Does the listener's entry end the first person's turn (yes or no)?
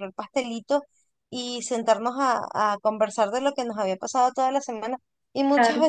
no